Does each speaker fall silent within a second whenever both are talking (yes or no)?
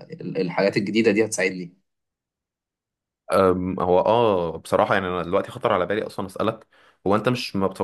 yes